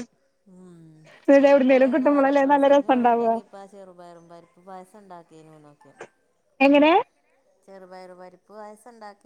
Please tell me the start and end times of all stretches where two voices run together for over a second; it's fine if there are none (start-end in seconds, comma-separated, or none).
1.4-3.3